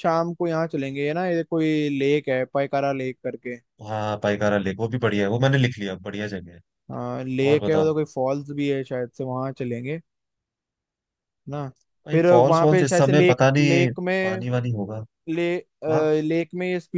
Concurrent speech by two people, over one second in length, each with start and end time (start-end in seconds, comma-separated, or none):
12.1-14.4